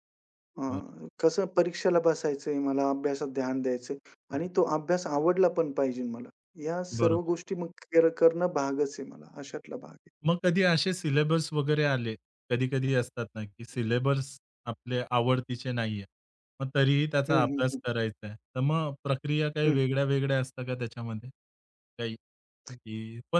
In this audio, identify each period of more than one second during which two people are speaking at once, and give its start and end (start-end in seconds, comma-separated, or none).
none